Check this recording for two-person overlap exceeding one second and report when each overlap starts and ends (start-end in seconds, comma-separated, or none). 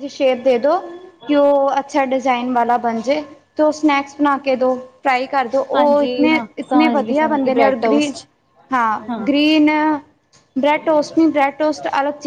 5.8-8.1